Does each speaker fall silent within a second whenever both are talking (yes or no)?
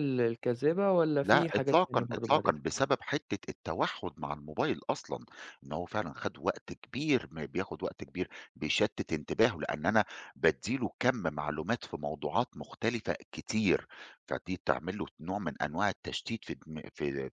no